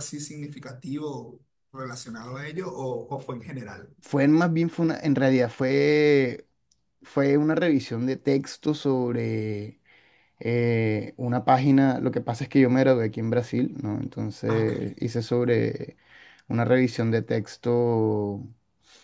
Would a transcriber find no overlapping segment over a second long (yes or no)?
yes